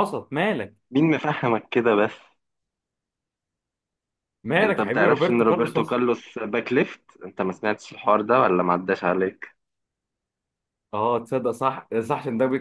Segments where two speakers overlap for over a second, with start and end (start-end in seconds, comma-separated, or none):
4.6-6.0